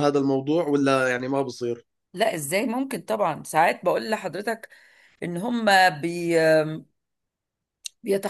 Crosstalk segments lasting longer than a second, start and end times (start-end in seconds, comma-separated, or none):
none